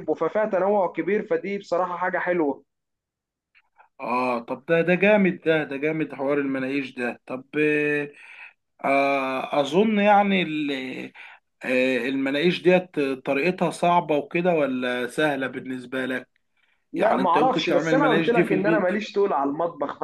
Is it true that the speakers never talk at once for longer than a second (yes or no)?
no